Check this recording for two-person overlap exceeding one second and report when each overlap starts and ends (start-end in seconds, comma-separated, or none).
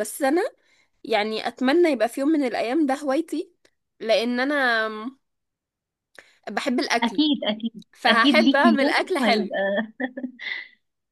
7.9-9.6